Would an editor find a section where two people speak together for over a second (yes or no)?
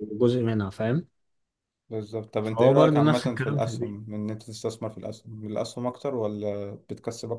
yes